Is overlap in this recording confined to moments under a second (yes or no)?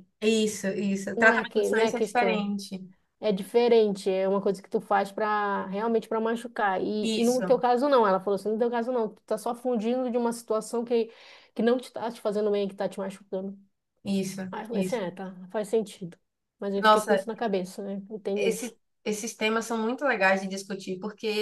no